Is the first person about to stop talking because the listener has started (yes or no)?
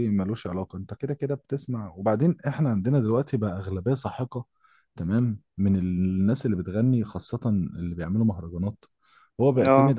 no